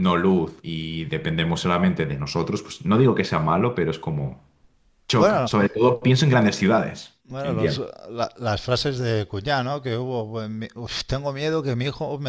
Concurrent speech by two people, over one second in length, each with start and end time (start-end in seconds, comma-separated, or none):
none